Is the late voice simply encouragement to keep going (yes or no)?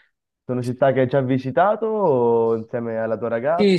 no